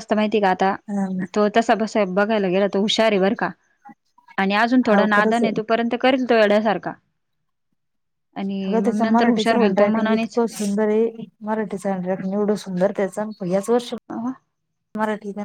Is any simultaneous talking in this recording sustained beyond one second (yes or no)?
yes